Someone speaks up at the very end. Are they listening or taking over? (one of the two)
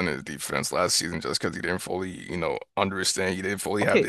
taking over